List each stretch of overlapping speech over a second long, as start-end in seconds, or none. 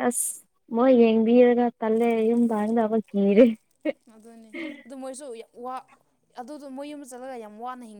none